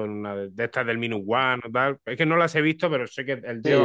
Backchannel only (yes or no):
no